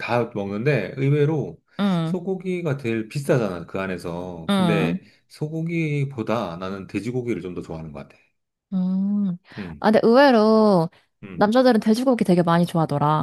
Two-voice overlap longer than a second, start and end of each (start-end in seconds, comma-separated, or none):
none